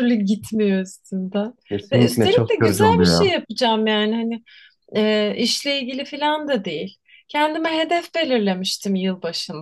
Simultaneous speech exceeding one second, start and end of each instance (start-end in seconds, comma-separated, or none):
1.9-3.3